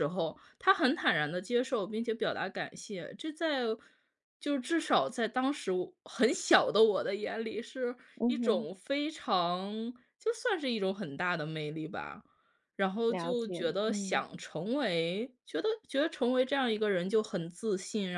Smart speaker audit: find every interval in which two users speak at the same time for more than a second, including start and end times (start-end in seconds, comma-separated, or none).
13.1-14.3